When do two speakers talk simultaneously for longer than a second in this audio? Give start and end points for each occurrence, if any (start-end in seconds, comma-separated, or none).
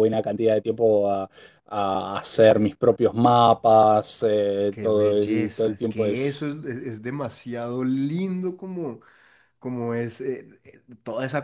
4.7-6.4